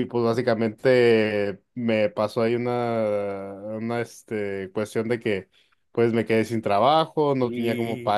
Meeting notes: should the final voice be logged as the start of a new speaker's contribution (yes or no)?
no